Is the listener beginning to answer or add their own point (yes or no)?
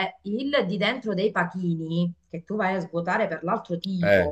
no